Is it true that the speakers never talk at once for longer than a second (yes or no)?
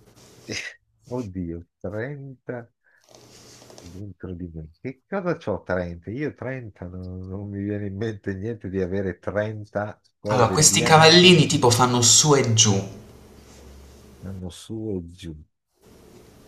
no